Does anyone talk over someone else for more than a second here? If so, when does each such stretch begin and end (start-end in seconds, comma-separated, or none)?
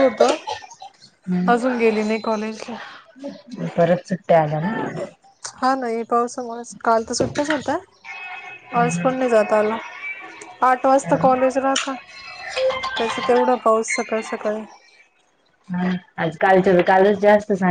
none